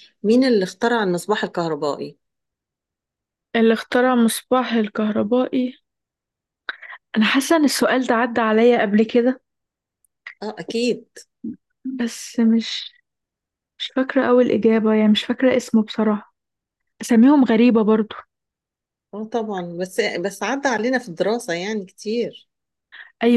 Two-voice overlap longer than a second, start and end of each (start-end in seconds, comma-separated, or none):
none